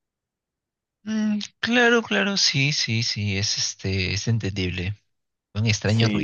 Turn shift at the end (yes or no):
yes